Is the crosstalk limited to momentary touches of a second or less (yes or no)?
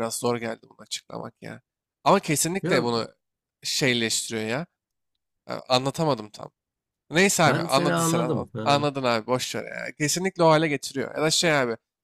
no